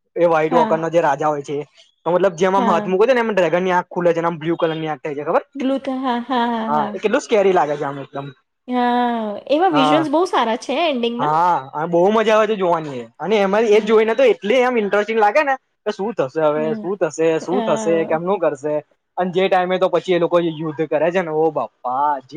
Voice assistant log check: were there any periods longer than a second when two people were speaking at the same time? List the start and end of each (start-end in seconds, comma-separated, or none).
none